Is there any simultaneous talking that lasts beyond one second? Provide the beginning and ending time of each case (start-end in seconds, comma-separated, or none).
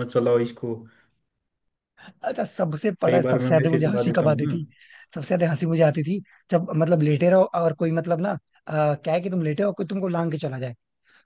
3.0-4.5